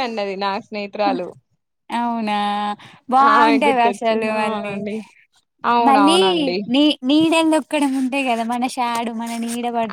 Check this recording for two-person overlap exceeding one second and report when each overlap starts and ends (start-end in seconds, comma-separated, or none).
3.3-4.7